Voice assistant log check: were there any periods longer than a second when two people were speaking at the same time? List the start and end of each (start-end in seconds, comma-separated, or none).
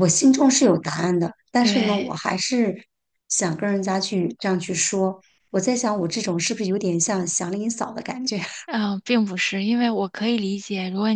none